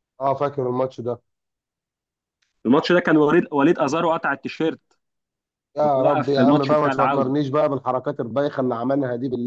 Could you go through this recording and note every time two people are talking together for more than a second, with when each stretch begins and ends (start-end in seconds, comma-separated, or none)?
5.8-7.3